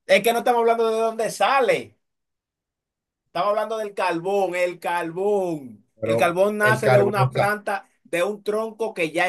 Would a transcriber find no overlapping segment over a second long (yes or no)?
no